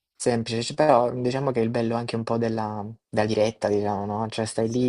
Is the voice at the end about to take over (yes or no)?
no